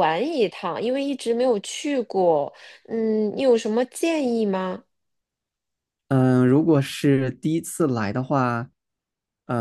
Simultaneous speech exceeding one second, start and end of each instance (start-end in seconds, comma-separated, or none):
none